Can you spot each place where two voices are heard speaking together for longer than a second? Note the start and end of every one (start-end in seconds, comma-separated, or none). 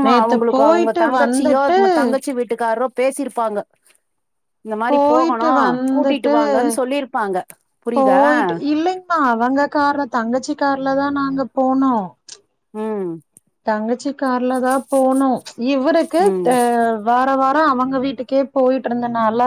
none